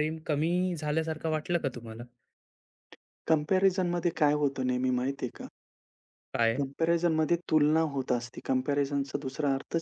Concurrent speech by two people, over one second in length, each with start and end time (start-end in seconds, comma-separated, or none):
none